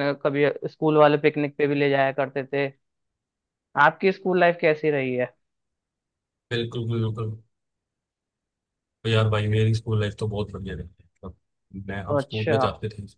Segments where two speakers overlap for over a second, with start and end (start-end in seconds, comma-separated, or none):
none